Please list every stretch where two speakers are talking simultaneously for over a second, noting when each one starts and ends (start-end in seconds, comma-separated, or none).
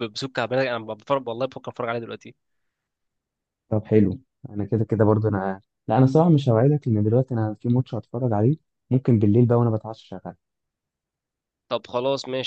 none